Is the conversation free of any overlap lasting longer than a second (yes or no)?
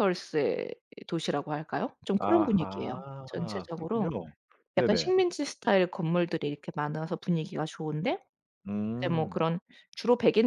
no